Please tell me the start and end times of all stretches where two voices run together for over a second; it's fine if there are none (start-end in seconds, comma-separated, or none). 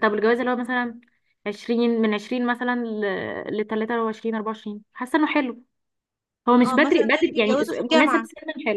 6.7-8.3